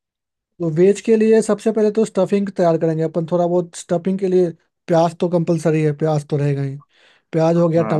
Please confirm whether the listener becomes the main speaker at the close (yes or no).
no